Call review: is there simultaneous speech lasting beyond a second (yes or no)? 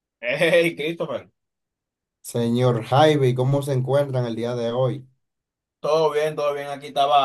no